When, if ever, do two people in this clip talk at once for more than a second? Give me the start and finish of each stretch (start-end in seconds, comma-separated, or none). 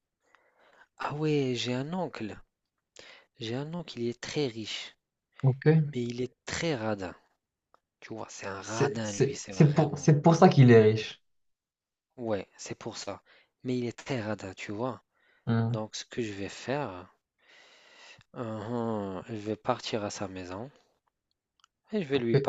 8.6-10.1